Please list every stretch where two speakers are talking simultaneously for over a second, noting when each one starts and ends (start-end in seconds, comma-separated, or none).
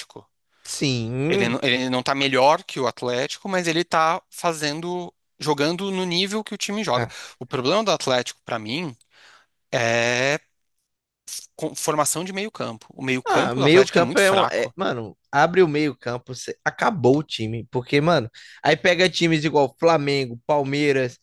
13.3-14.7